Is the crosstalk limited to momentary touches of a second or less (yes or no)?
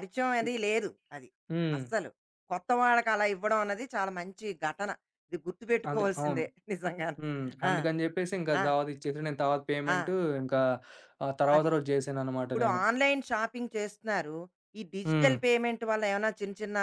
yes